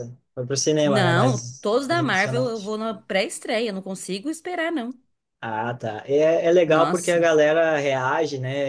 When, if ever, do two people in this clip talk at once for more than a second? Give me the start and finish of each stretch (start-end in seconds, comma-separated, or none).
0.8-2.7